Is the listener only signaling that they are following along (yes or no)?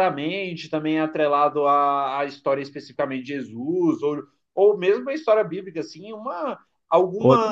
yes